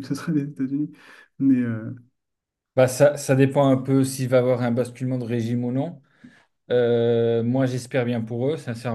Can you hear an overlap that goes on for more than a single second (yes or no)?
no